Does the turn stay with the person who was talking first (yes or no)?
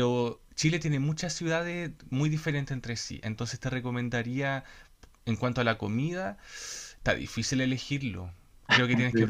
yes